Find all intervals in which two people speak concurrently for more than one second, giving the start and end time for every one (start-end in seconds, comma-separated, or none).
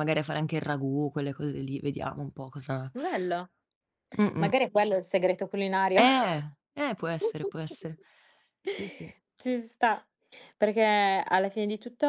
none